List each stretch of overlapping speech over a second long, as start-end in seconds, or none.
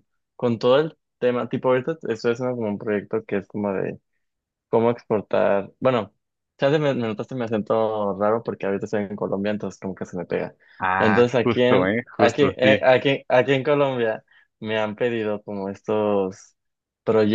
11.0-12.8